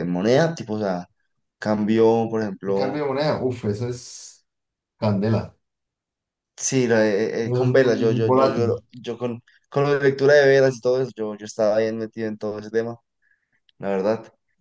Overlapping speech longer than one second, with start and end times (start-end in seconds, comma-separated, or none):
7.4-8.8